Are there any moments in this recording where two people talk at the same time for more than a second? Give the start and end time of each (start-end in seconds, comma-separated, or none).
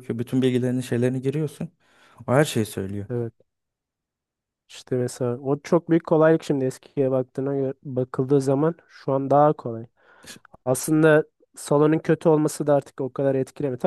none